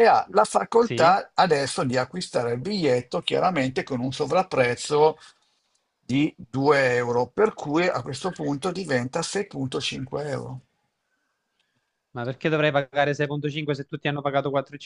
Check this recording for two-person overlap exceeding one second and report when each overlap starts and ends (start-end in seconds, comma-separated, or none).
none